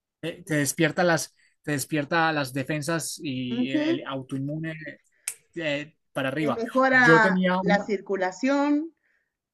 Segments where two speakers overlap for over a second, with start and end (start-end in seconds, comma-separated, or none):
6.4-7.9